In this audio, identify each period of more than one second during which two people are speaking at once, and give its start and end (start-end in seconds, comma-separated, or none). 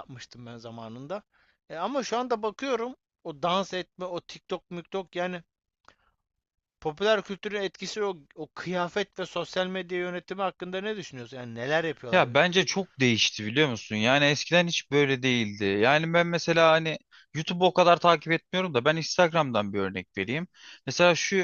none